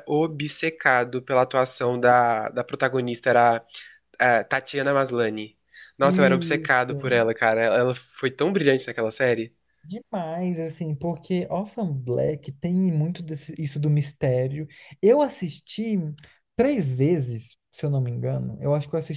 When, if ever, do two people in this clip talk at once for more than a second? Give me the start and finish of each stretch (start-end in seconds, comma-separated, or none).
6.0-7.2